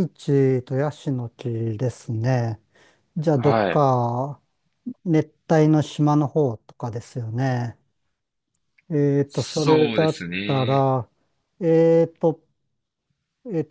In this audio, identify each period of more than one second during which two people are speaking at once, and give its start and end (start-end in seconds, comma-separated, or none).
9.3-10.9